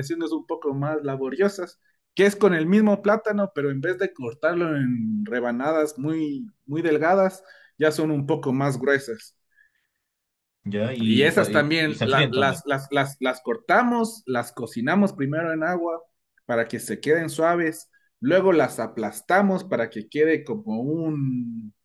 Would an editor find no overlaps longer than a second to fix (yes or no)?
no